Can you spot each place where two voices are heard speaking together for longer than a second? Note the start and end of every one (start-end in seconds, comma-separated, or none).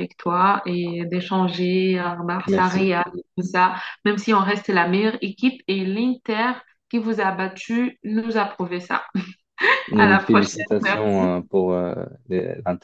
10.0-11.3